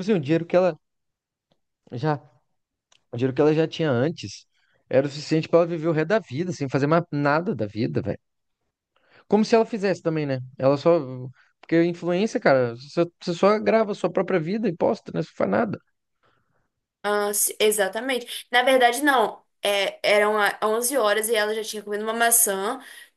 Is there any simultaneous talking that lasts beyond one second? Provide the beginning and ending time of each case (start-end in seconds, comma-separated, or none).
none